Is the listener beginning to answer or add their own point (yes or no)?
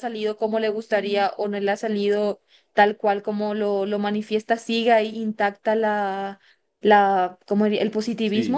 yes